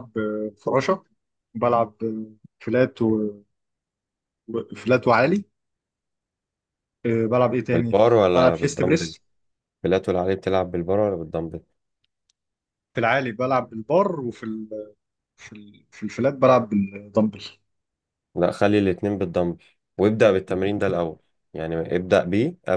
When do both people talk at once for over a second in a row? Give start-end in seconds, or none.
7.7-9.1